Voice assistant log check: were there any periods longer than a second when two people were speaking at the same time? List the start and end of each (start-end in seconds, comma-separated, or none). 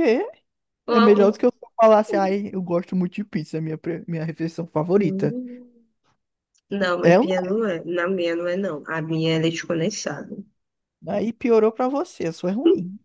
none